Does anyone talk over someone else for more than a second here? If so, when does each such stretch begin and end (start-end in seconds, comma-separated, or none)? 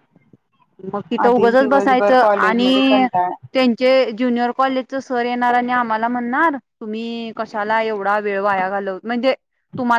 1.3-3.0